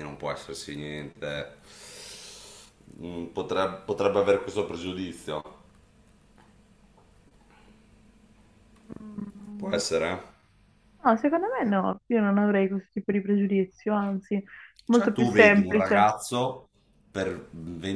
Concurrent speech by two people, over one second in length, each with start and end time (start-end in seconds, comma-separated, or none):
14.9-16.1